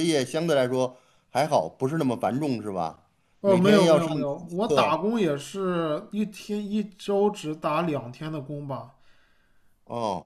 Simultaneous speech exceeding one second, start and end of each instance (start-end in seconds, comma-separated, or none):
3.4-5.0